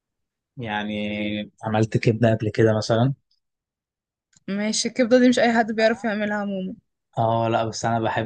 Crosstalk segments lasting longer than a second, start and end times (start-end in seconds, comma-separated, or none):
none